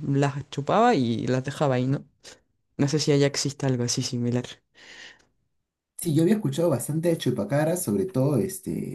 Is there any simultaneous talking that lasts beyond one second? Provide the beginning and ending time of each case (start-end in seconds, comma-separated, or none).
none